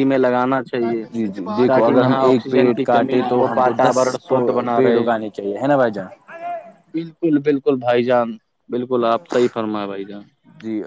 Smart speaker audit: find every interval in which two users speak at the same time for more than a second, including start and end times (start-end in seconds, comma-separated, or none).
1.6-4.0